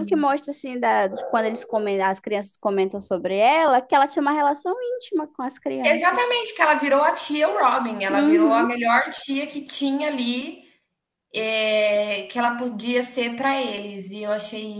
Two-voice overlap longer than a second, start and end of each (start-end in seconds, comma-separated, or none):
none